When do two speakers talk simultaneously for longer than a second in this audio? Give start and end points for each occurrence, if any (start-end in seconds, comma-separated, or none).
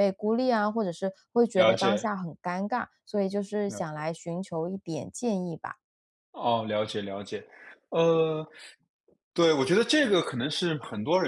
none